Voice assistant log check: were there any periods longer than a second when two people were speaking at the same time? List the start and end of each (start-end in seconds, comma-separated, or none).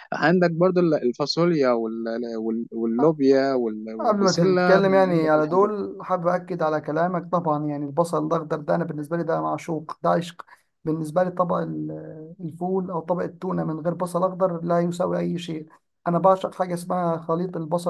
4.0-5.7